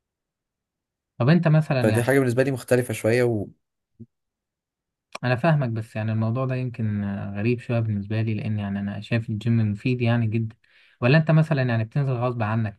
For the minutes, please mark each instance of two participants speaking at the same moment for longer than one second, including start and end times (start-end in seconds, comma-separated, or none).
none